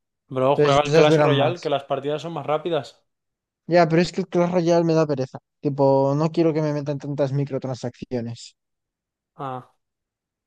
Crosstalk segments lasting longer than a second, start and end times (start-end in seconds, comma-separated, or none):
0.5-1.7